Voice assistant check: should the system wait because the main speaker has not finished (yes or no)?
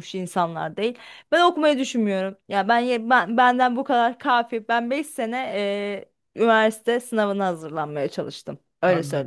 no